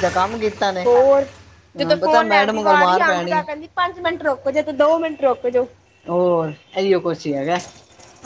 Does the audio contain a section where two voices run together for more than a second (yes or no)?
yes